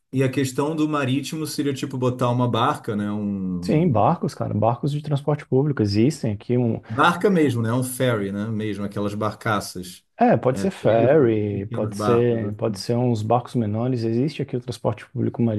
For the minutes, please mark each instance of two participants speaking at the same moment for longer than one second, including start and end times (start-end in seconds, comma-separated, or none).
10.5-12.8